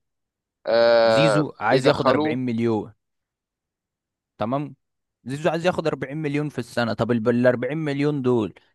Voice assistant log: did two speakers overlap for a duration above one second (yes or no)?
yes